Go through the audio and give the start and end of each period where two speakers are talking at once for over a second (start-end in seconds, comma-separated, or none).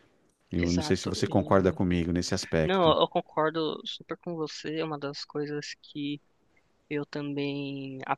0.6-1.8